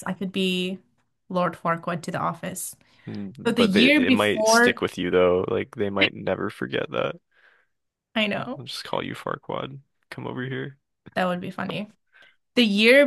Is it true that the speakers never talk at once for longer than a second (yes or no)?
no